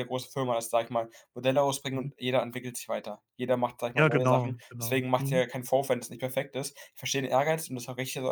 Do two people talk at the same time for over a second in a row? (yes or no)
yes